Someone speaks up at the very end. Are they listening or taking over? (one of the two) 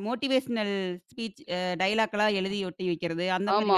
taking over